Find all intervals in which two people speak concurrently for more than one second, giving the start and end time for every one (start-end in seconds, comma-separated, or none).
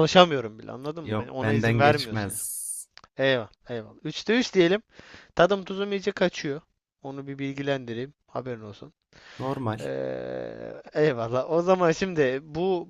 1.0-2.4